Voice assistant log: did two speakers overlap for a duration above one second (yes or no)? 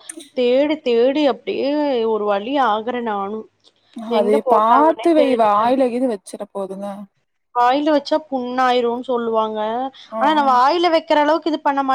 yes